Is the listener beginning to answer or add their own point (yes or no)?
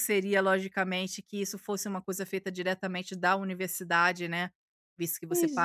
no